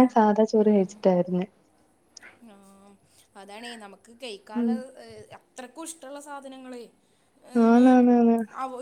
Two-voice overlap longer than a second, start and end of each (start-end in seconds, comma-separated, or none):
none